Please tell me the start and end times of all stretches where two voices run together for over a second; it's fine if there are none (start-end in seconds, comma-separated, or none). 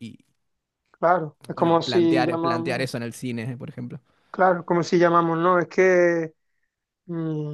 1.5-2.9